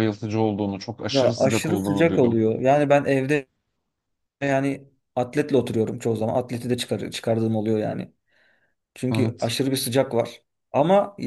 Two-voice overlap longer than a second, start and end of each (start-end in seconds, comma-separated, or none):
1.1-2.4